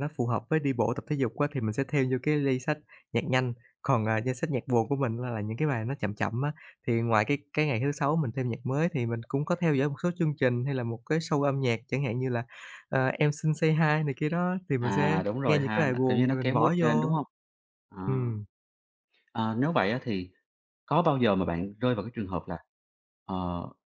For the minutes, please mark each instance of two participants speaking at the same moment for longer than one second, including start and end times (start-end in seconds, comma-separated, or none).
14.8-17.1